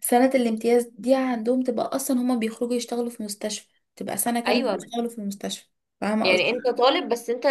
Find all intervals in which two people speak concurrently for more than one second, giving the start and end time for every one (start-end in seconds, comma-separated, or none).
none